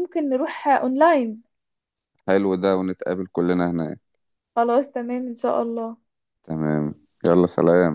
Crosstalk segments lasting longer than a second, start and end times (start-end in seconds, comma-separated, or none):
none